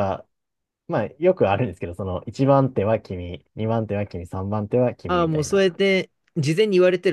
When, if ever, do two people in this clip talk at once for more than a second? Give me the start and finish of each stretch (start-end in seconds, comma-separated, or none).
none